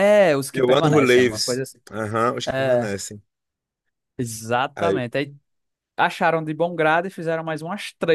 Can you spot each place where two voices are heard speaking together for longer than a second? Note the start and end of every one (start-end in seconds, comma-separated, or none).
0.5-1.8